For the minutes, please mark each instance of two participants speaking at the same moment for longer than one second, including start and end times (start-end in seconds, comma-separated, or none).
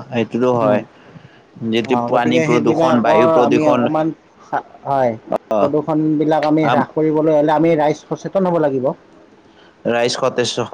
1.7-3.8